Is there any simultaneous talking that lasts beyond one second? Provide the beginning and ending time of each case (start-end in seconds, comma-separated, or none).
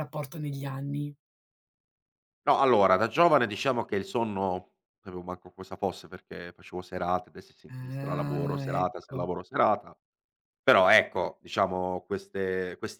7.7-9.3